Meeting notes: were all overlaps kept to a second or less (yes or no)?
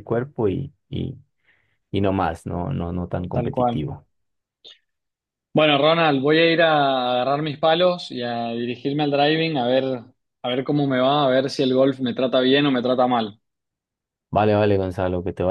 yes